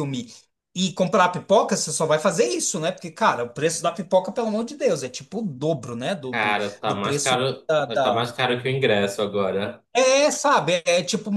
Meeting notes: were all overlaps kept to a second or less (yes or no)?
no